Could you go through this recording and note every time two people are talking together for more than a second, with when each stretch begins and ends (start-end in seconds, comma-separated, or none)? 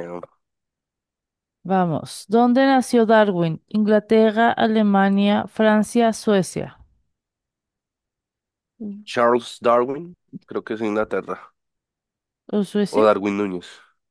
none